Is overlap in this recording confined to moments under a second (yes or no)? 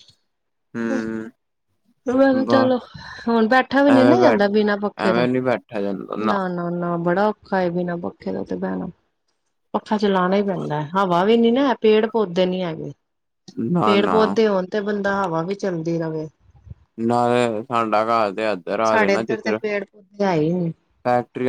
yes